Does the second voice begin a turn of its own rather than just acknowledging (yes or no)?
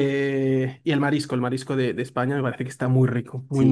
yes